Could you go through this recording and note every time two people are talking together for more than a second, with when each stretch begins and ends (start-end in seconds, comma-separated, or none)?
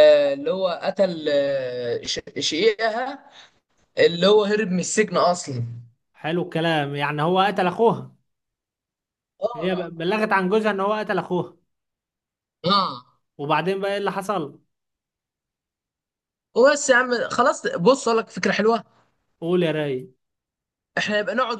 none